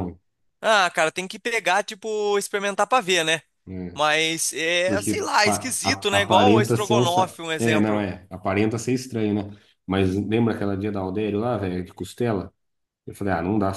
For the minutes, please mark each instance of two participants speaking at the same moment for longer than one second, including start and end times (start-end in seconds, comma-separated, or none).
4.8-8.0